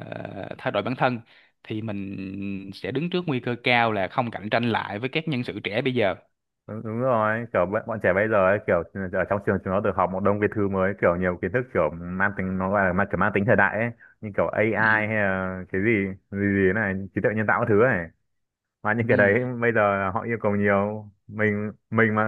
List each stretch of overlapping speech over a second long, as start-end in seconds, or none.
none